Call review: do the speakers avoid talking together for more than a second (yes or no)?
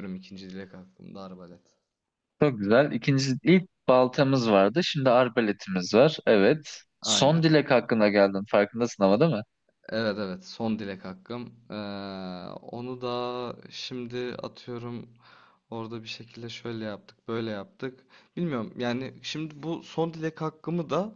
yes